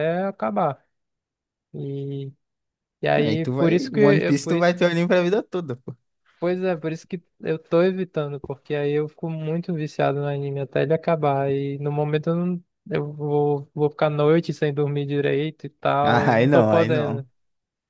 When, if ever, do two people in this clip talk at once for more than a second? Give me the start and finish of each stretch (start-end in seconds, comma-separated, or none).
3.2-4.8, 16.0-17.2